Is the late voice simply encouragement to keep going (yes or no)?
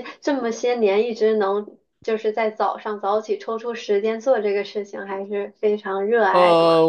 no